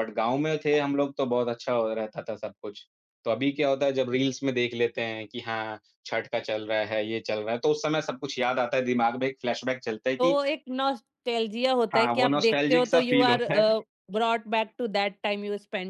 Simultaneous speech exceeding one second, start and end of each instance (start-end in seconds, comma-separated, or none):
11.9-13.7